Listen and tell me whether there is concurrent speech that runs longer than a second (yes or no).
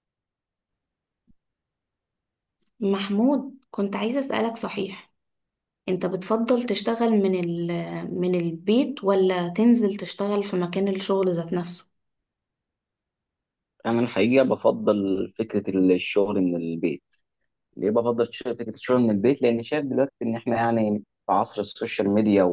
no